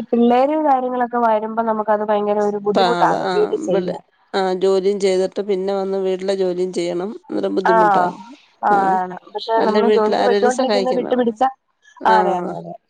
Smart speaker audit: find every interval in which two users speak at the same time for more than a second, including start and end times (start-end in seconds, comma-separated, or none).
9.6-11.2